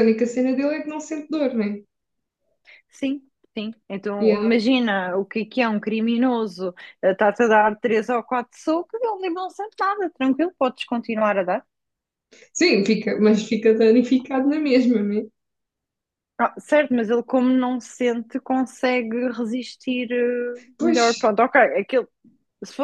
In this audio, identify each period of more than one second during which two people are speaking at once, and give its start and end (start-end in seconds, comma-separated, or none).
none